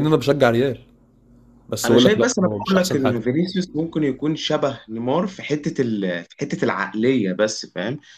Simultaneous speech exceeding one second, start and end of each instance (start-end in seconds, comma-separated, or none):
1.8-3.2